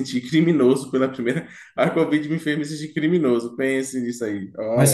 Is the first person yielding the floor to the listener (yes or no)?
yes